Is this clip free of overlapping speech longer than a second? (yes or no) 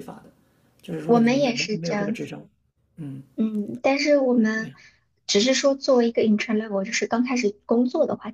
no